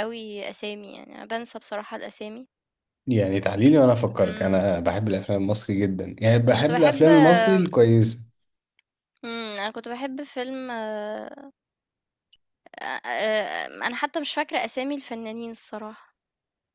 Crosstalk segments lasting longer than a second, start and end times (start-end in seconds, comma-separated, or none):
none